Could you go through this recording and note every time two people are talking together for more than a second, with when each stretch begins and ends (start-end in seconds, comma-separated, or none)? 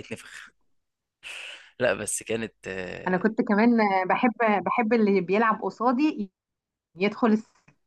none